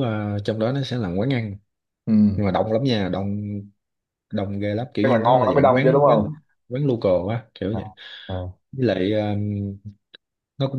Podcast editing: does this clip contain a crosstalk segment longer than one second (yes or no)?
yes